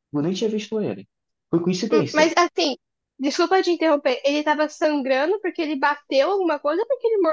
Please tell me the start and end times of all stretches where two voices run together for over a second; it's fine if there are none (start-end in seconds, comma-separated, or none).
none